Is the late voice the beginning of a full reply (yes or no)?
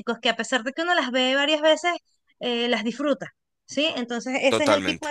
no